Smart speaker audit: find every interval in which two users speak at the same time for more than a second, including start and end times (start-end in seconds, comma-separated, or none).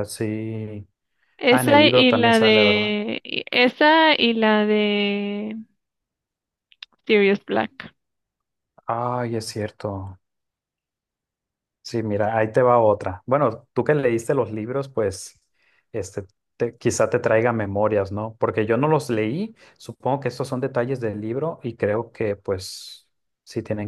1.5-3.0